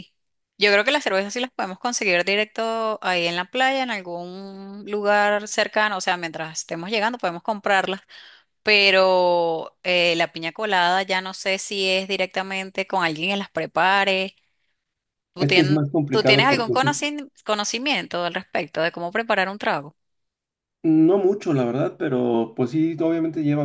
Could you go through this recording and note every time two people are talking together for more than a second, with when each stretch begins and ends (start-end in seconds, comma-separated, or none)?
15.4-17.0